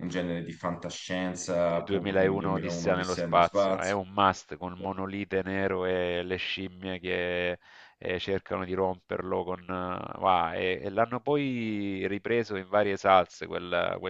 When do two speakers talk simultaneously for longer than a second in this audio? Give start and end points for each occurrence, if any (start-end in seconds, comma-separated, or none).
1.4-4.0